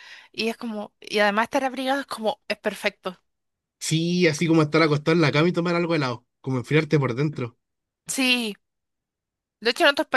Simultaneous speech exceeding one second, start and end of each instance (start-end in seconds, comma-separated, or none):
none